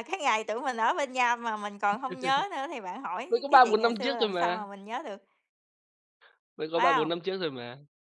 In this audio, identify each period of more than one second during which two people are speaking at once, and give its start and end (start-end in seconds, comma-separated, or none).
3.3-4.7